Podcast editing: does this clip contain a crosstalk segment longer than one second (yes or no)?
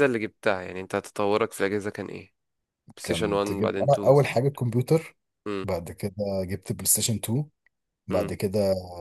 yes